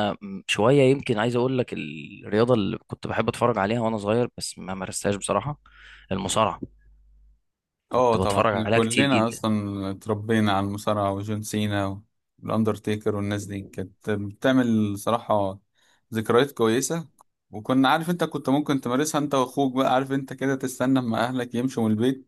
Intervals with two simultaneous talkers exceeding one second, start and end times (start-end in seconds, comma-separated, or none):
7.9-9.4